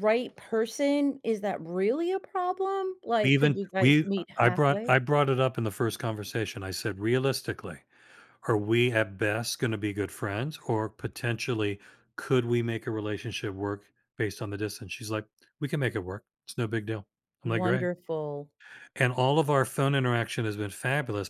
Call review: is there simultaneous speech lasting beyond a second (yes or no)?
yes